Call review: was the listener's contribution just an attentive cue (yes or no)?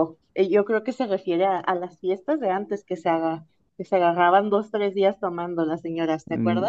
no